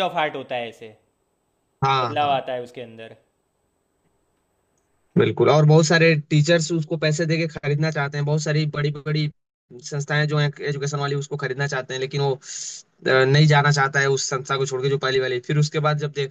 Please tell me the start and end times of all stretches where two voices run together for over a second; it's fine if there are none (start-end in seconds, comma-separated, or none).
none